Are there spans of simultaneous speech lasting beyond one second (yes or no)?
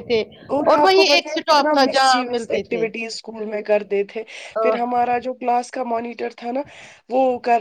yes